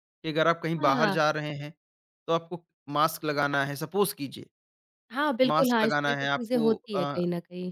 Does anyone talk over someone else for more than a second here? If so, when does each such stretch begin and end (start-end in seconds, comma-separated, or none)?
5.5-7.2